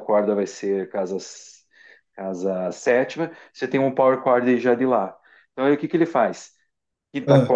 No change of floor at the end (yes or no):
yes